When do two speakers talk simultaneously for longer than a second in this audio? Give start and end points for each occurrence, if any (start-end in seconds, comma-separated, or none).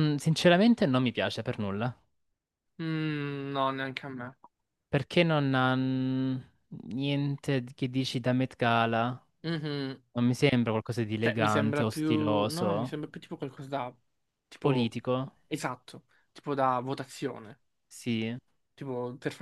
11.2-13.0